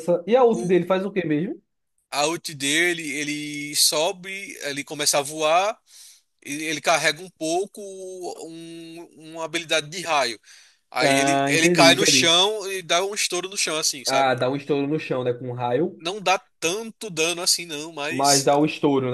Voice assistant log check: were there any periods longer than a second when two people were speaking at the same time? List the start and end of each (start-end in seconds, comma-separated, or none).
11.0-12.3